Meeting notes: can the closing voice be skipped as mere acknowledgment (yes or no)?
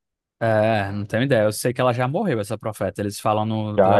no